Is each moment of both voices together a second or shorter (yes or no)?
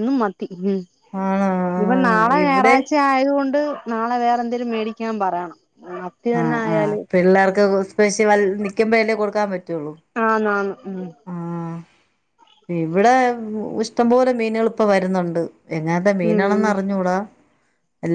no